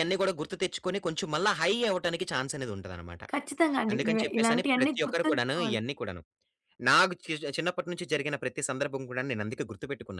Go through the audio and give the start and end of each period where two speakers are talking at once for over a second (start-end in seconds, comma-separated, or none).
3.9-5.8